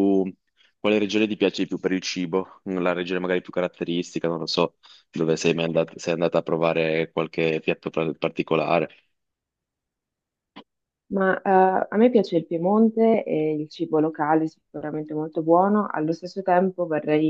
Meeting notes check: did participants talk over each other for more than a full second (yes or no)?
no